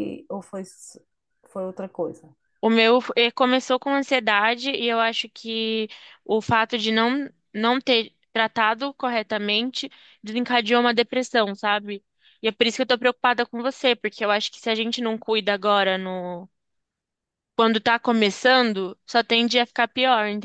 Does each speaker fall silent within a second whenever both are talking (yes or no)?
yes